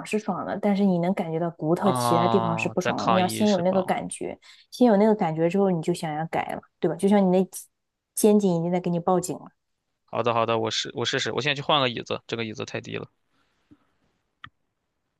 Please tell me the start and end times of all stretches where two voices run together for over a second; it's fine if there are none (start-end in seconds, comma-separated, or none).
1.8-3.9